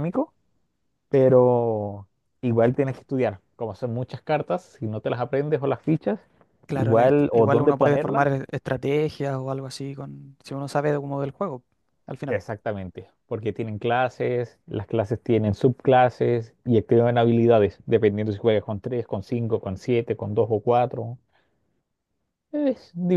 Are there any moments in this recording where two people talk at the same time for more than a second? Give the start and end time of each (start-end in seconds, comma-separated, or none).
6.7-8.3